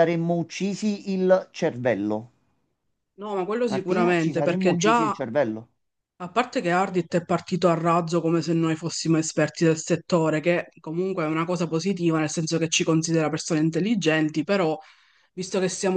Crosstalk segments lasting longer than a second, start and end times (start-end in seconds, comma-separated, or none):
3.6-5.2